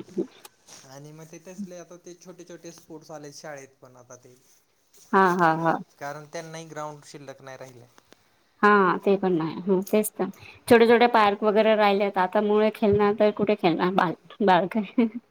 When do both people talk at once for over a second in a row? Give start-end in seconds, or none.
none